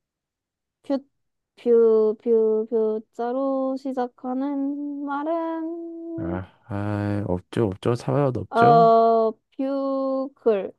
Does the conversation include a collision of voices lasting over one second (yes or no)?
no